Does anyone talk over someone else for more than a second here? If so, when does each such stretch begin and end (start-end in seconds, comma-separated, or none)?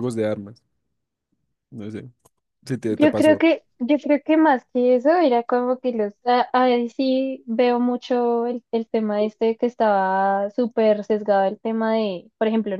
none